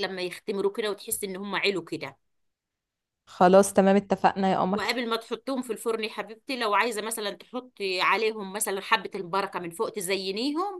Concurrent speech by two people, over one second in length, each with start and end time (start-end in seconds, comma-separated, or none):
none